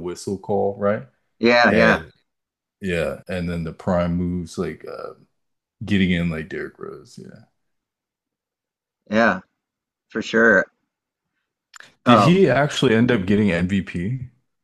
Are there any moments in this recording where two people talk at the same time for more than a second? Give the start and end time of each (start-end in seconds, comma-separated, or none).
none